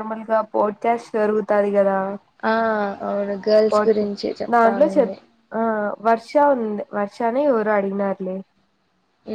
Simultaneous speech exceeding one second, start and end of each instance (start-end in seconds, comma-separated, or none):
none